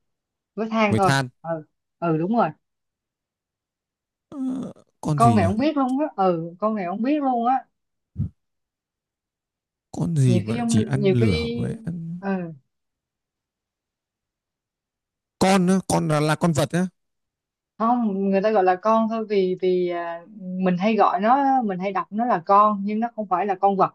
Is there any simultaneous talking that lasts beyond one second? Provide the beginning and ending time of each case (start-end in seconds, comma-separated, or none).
10.3-11.7